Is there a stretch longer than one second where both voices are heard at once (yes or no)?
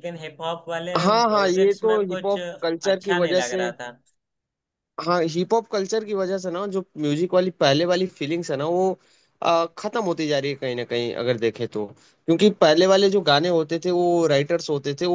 yes